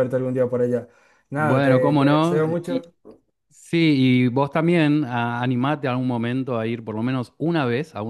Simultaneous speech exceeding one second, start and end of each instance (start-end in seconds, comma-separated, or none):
1.4-2.8